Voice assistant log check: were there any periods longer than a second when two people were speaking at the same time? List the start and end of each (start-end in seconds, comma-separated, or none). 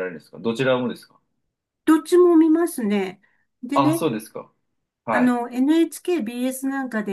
none